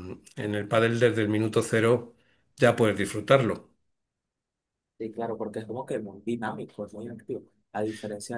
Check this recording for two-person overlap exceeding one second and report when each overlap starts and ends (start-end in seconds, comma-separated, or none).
none